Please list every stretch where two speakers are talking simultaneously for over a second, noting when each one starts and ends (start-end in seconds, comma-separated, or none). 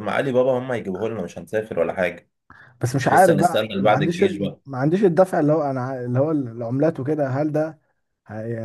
2.9-4.4